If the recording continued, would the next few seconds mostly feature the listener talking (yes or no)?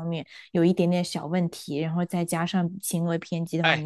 no